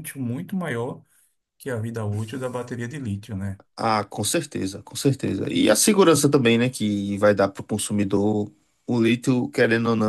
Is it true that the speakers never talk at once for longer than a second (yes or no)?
yes